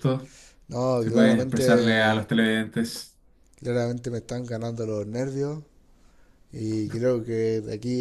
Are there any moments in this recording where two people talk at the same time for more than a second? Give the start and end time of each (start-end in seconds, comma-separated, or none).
1.0-2.3